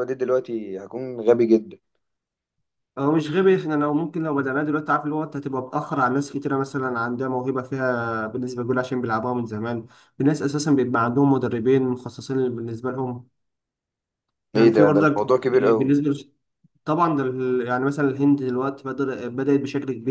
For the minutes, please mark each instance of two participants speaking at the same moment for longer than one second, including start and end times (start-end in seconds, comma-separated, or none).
14.6-16.0